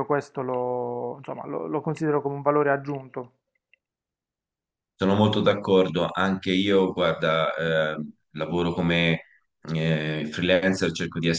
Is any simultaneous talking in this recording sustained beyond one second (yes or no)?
no